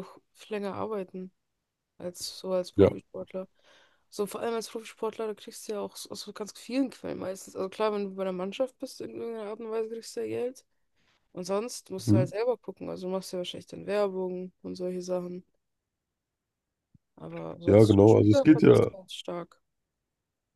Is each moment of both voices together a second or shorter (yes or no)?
no